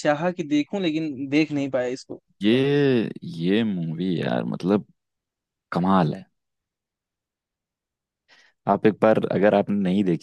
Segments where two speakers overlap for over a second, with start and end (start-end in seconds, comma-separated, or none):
none